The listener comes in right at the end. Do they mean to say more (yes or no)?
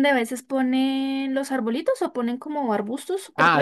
yes